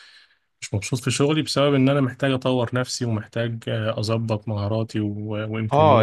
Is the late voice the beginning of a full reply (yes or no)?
yes